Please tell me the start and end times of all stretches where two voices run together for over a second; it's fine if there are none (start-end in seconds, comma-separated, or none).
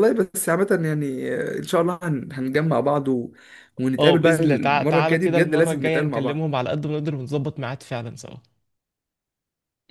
4.0-6.4